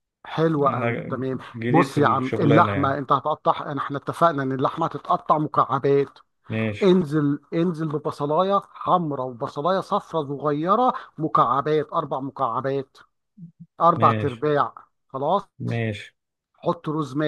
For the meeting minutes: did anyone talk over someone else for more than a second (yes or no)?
yes